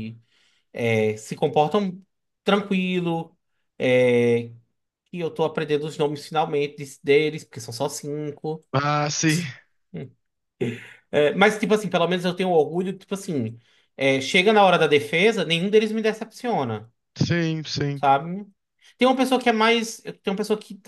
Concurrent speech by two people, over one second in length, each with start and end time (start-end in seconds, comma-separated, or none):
none